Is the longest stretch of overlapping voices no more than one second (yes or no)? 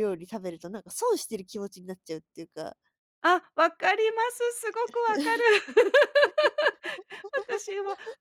yes